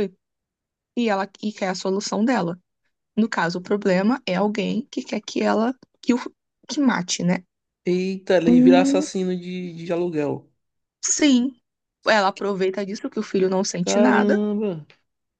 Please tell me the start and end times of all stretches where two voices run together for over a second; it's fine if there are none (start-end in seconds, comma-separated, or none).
none